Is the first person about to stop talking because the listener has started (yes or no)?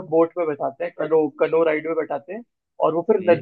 no